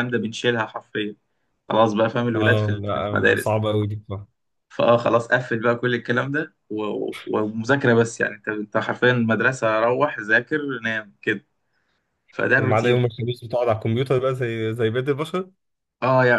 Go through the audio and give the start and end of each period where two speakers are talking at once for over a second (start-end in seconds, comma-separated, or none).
2.3-3.6